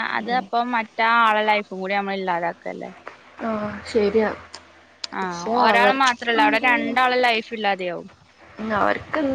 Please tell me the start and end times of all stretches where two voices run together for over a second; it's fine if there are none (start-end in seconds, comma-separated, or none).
5.2-6.7